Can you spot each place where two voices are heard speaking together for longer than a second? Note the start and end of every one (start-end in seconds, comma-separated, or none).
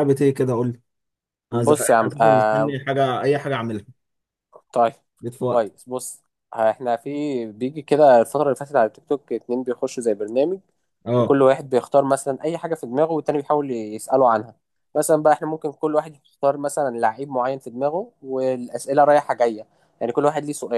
1.5-2.8